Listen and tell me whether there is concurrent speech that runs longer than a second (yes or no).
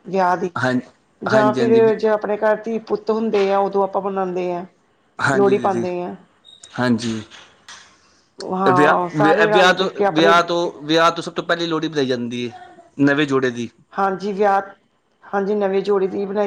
yes